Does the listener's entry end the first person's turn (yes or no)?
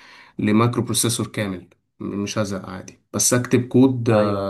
no